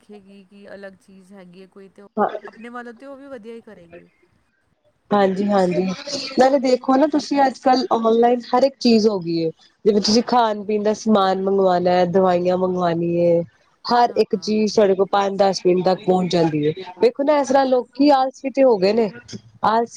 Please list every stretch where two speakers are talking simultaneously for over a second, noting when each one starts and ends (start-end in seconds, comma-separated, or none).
none